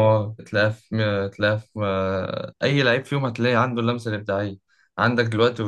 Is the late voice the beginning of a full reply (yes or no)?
no